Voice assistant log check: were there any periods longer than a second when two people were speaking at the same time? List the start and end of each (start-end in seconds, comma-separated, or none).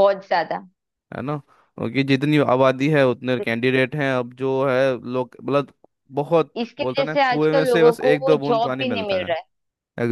6.6-9.3